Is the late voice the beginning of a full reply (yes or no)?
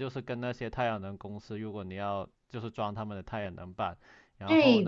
yes